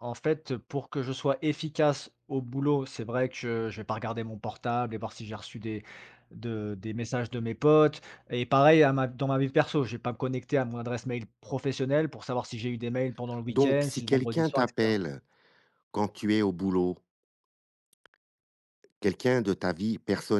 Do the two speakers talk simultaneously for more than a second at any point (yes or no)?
yes